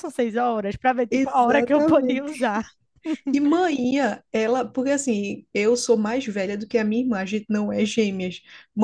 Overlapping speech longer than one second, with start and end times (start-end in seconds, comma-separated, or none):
1.1-2.3